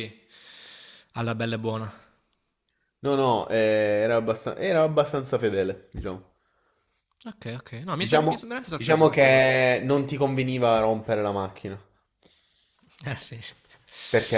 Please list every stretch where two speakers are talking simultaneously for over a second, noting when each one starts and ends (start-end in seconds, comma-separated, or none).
8.0-9.5